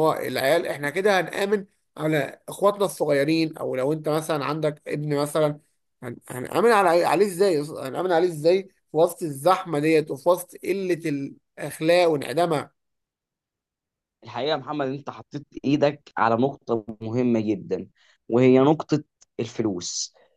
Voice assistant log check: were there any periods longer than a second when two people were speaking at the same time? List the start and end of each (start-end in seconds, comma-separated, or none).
none